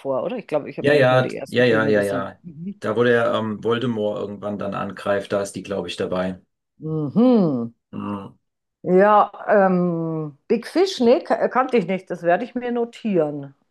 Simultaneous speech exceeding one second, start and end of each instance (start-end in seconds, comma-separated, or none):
0.8-2.4